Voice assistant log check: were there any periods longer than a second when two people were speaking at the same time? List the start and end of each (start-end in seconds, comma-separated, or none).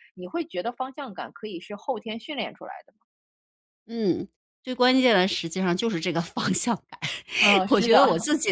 none